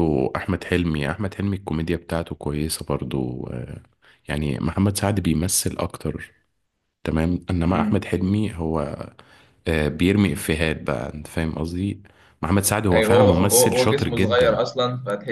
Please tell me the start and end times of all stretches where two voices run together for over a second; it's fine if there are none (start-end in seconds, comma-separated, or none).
12.9-14.6